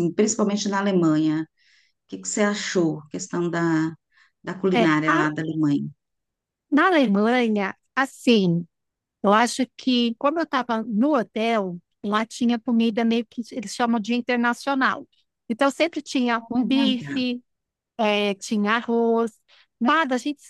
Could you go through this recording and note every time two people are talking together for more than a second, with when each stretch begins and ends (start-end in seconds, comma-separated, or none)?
none